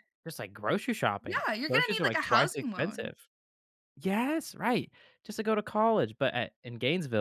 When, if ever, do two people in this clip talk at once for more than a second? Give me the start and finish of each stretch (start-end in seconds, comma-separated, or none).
1.2-3.1